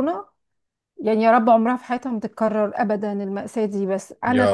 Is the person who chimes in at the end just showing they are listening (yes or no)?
yes